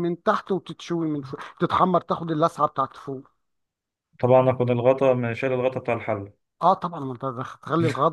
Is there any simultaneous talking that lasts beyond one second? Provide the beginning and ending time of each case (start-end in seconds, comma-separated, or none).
none